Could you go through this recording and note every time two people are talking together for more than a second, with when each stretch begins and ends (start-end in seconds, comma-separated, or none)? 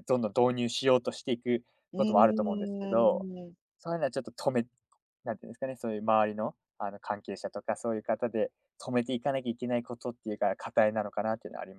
1.9-3.3